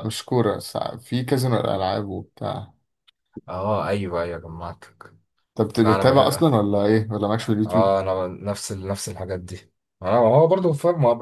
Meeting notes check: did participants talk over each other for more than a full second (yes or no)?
no